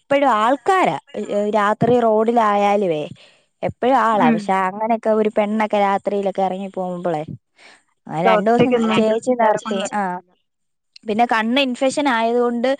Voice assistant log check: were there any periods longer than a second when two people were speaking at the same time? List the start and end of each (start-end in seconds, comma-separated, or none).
8.2-10.2